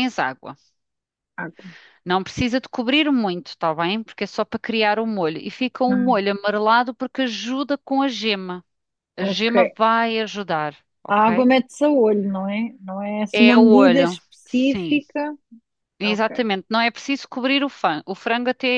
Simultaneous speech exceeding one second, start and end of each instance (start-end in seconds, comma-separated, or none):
13.3-15.0